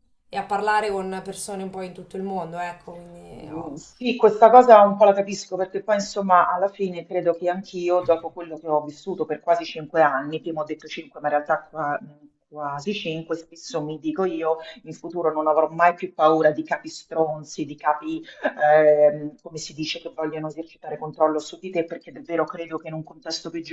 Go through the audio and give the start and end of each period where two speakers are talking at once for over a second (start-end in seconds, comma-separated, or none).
none